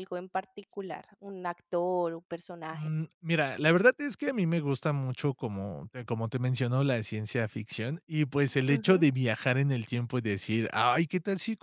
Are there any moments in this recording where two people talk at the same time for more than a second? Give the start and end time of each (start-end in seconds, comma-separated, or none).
none